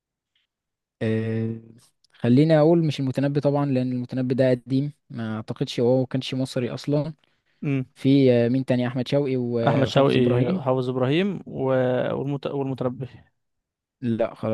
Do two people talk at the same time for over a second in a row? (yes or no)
no